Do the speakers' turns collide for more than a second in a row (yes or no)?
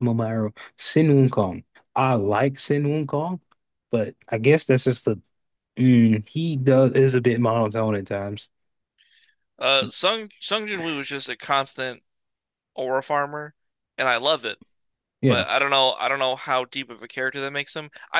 no